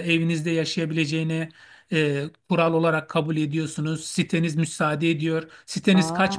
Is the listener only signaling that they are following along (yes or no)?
yes